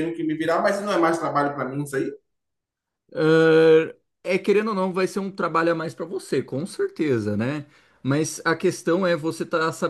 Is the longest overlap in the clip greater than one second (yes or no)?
no